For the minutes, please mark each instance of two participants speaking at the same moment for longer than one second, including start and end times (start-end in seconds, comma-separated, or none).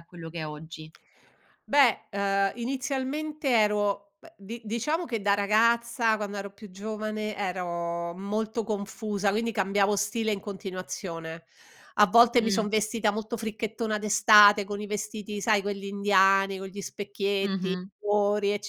none